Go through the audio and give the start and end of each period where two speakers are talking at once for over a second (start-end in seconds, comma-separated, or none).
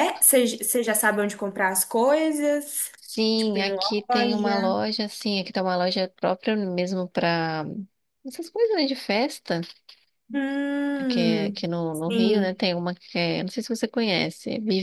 3.4-4.8, 11.1-12.6